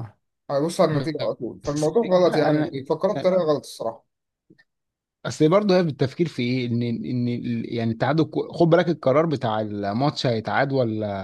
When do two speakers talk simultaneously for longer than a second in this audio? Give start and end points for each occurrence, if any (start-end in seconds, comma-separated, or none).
0.9-2.8